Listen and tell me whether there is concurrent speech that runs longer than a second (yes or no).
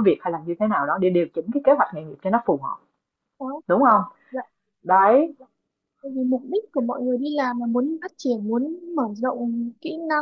no